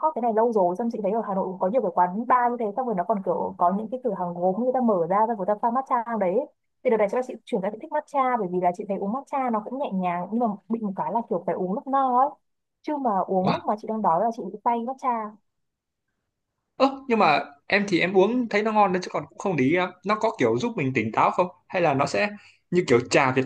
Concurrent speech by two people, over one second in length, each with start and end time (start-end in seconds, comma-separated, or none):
none